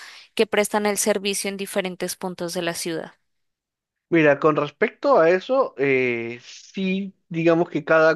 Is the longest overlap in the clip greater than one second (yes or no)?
no